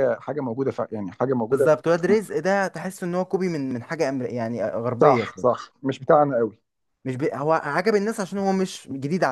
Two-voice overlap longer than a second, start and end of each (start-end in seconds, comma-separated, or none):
none